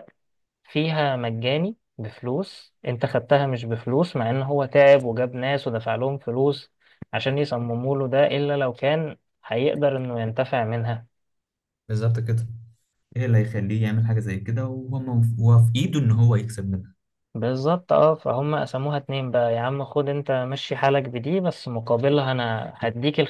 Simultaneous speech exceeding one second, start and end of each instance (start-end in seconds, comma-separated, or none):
none